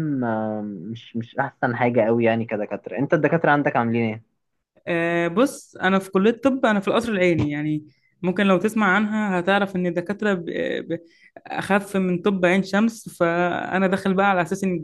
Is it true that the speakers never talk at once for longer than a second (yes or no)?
yes